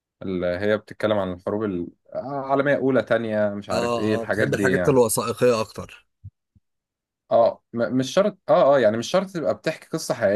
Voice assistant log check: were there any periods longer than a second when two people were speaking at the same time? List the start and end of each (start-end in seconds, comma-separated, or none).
3.7-5.0